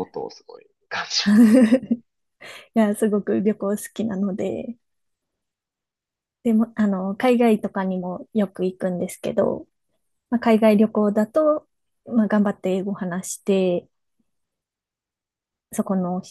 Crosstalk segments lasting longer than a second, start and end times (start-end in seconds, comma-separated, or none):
none